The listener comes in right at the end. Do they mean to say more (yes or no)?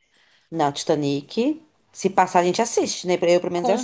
yes